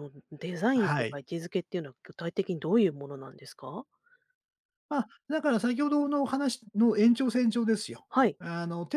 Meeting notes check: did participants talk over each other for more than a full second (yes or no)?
no